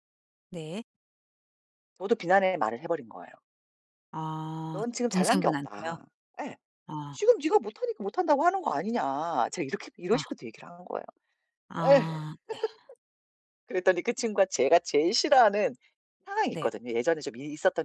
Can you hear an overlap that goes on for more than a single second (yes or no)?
yes